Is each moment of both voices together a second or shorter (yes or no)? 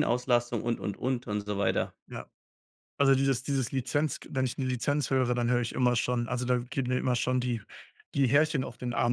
yes